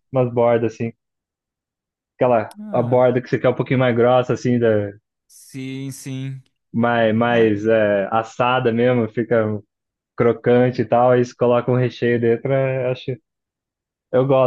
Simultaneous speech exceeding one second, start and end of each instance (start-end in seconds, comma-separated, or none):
none